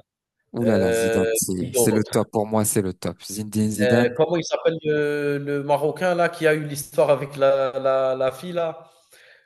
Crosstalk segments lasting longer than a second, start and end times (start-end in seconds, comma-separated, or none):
0.6-2.1